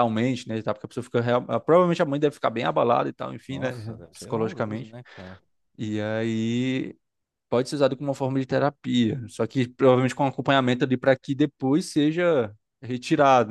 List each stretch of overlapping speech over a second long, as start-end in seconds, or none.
3.5-5.0